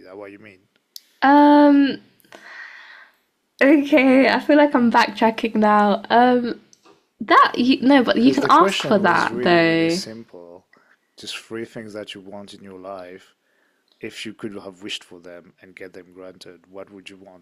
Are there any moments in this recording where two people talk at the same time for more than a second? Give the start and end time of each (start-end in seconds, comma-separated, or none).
8.2-10.0